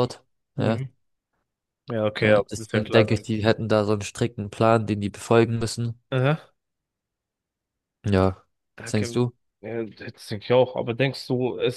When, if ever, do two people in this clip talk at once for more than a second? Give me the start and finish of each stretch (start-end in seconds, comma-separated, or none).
2.2-3.5